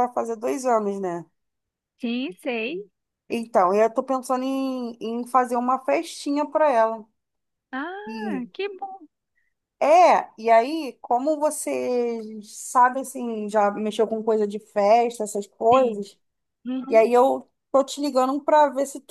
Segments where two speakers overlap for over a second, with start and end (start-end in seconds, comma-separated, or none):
none